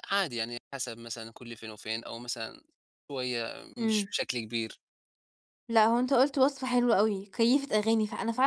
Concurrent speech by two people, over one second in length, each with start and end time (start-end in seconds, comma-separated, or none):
none